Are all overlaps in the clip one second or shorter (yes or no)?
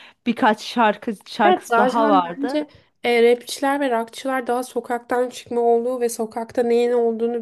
no